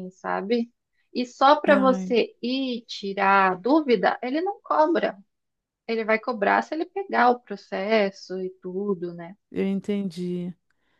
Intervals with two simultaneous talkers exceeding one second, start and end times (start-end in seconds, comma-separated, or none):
none